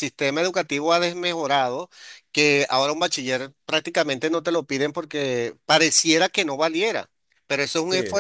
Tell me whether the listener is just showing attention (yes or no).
yes